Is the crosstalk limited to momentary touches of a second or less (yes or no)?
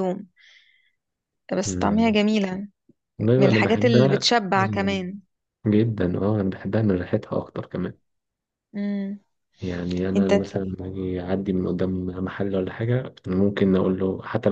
no